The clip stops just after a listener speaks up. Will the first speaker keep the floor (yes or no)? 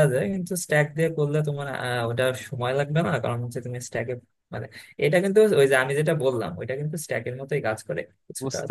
no